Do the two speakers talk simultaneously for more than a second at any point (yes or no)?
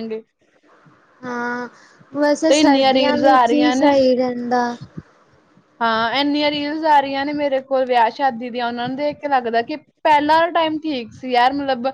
yes